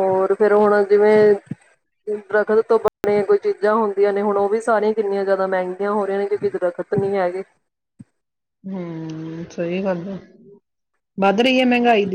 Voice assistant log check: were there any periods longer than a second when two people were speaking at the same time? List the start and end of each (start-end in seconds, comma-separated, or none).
none